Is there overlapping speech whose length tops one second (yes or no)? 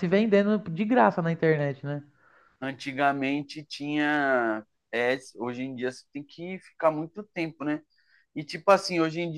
no